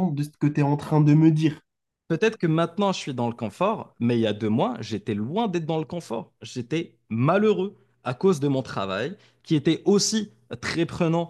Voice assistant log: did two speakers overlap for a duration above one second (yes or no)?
no